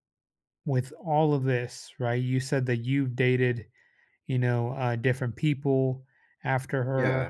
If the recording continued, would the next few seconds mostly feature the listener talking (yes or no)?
no